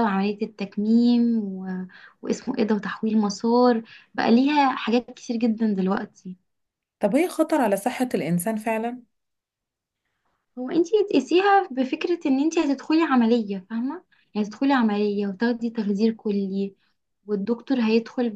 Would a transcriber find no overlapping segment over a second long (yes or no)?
yes